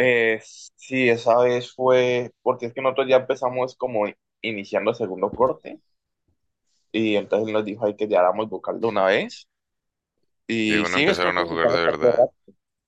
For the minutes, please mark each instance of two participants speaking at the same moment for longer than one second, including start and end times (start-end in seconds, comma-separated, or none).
10.7-12.3